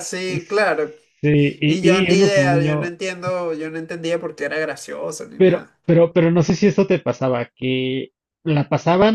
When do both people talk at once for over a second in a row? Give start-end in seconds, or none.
1.6-2.9